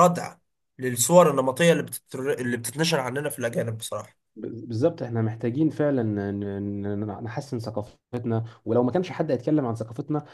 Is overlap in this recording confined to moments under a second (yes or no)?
yes